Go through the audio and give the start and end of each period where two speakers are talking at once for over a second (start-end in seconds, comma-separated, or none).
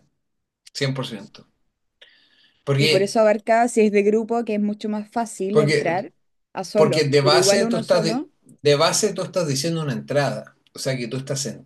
6.7-8.3